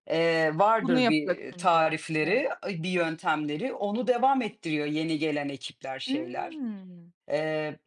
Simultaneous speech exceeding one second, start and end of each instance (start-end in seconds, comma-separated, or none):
0.8-2.5